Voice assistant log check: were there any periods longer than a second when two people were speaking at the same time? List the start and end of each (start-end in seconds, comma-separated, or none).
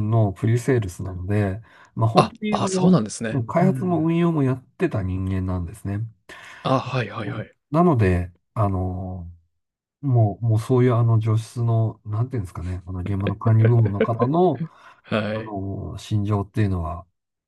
2.1-4.1